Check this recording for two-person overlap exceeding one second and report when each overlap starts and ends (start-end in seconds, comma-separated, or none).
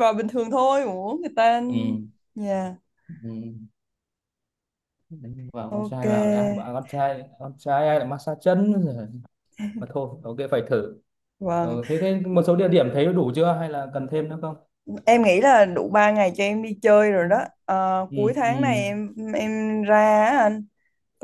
none